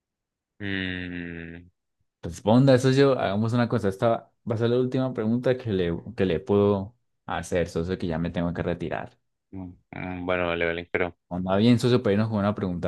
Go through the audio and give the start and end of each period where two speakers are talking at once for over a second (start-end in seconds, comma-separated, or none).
none